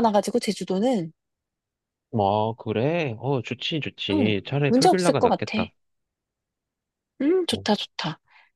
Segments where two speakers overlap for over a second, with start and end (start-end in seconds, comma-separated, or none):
4.1-5.6